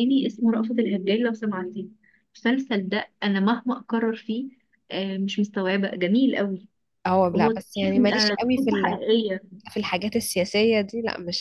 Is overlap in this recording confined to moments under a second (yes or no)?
no